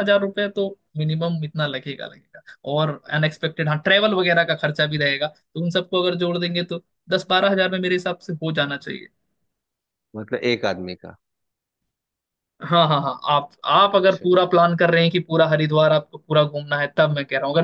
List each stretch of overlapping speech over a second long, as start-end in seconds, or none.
none